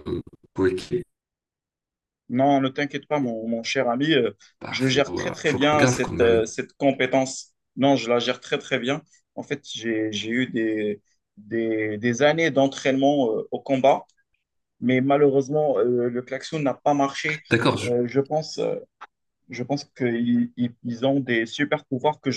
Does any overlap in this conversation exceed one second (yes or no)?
yes